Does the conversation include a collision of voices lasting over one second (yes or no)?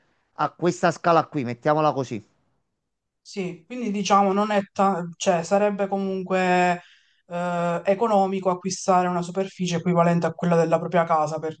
no